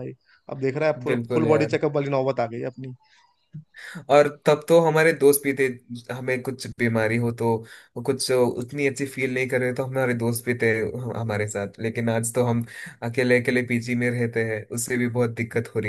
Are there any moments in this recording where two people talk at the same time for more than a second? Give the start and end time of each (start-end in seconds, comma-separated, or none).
none